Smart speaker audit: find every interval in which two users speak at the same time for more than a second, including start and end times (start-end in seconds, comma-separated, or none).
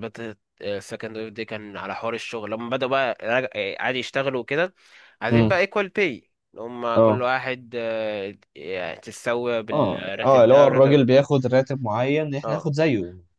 9.7-11.0